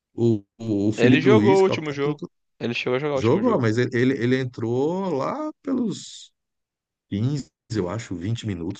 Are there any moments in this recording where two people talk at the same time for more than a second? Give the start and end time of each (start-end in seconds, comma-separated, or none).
1.0-2.3